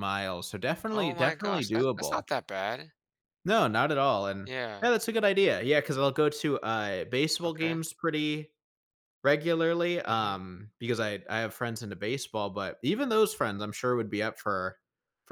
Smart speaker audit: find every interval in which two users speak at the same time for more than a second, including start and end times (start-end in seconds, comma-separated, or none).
0.9-2.2